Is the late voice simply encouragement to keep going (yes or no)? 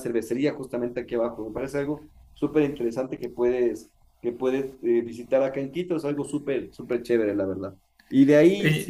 yes